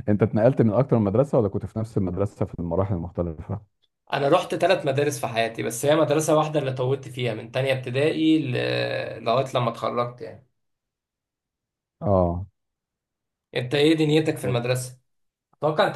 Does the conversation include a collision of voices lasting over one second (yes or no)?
no